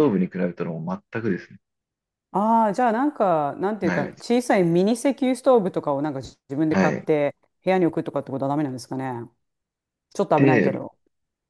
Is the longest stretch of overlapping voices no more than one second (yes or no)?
yes